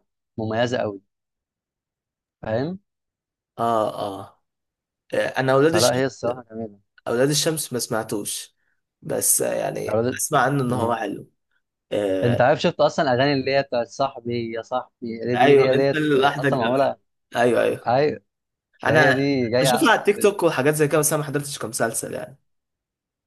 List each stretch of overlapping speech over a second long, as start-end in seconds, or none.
15.3-16.8, 18.8-20.4